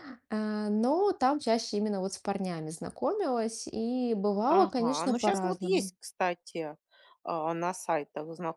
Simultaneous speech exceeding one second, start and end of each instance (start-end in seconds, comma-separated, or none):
4.5-5.9